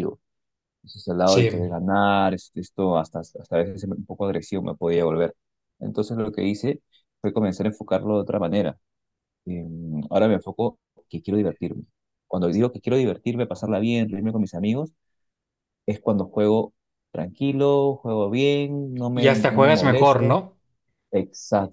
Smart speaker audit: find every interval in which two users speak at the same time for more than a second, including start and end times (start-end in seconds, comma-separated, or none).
19.1-20.4